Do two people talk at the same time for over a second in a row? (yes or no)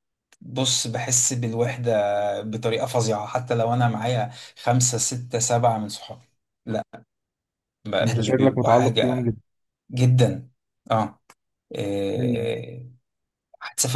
yes